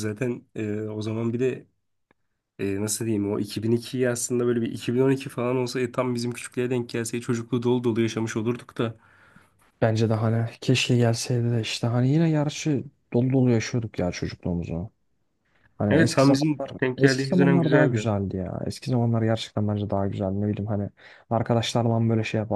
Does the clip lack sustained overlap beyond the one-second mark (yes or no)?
no